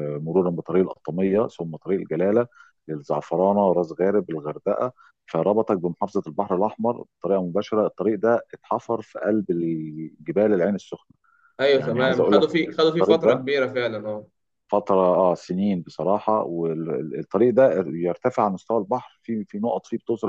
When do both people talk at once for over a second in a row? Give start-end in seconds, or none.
11.8-13.4